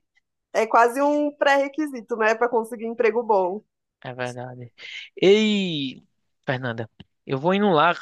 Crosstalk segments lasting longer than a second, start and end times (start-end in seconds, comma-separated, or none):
none